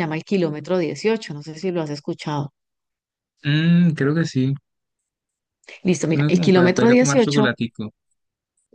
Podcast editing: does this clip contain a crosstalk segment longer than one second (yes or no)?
yes